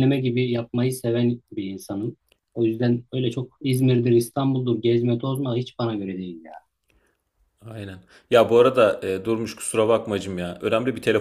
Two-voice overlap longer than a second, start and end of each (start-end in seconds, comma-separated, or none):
none